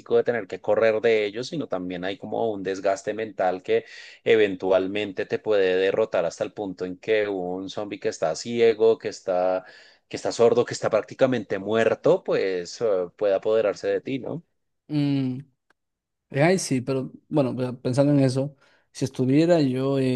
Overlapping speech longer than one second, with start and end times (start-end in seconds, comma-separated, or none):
none